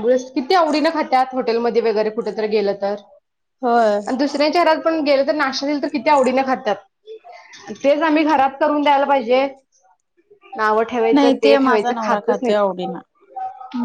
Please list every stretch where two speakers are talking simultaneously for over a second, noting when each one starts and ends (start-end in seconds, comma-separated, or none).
11.1-12.8